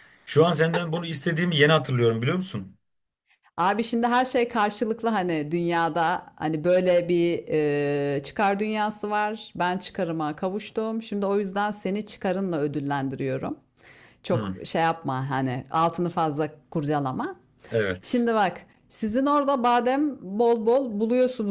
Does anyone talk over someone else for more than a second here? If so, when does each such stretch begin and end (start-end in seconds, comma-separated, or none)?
none